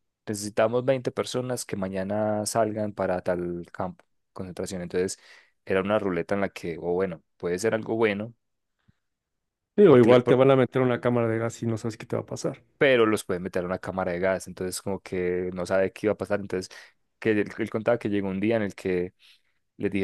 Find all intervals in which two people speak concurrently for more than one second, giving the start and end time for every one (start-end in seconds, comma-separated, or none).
none